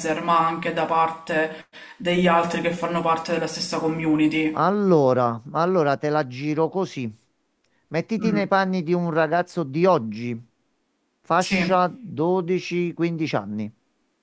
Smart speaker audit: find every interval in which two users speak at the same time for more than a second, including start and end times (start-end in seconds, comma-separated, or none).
none